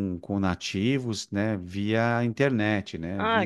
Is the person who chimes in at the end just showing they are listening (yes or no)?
no